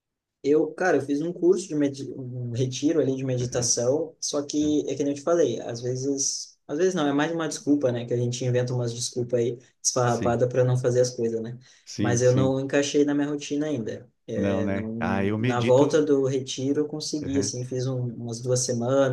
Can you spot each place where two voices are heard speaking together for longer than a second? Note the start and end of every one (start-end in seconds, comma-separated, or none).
14.3-16.0